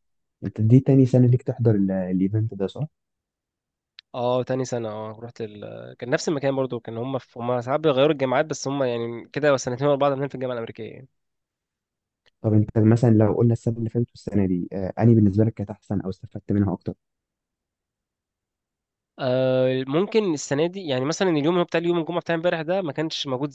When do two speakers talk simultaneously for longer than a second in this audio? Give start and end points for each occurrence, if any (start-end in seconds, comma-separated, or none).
none